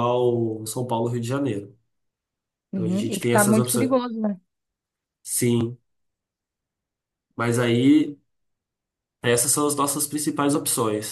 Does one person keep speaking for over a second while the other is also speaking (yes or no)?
yes